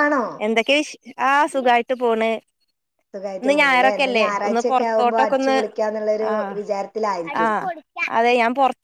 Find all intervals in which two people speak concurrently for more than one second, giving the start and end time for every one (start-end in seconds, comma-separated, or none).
3.4-5.6